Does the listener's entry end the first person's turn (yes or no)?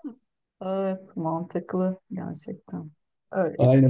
yes